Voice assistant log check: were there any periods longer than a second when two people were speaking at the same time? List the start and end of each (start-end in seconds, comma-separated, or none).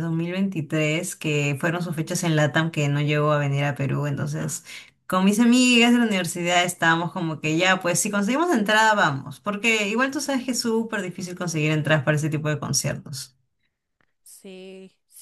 none